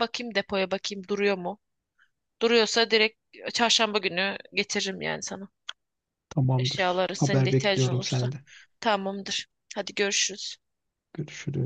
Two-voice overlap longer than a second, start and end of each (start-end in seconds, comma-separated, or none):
6.6-8.3